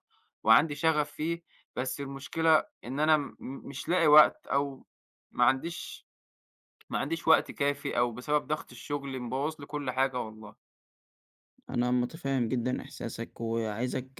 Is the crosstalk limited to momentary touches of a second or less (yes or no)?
yes